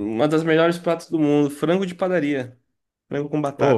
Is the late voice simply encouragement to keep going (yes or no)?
no